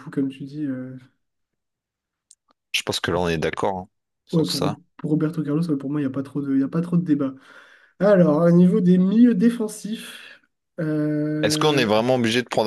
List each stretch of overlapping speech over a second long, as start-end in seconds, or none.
none